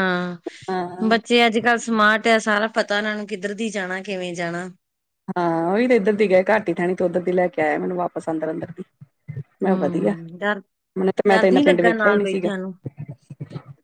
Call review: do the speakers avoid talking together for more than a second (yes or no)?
no